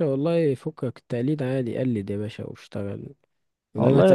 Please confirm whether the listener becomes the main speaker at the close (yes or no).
no